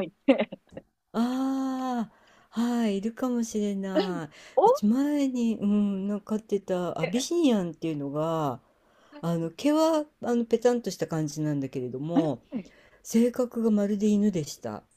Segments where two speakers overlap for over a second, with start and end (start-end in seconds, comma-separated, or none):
none